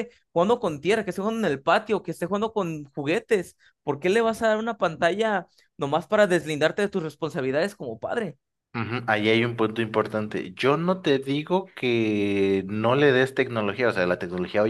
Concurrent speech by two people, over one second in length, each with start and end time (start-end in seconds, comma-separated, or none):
none